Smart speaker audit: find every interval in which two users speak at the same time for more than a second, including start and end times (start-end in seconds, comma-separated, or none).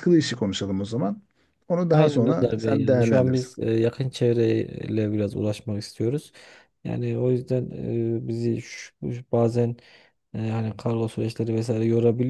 1.9-3.5